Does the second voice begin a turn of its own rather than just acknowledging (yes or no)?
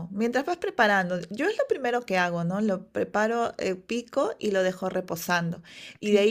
no